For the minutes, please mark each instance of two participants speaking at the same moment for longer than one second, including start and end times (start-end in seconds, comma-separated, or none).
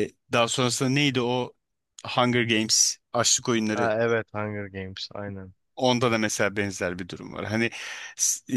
none